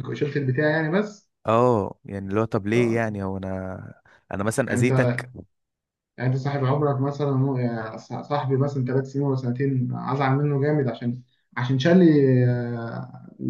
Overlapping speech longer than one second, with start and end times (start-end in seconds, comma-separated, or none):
none